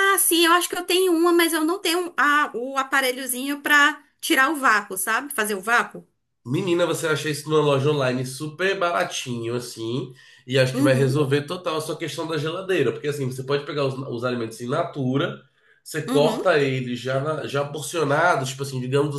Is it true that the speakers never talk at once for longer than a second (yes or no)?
yes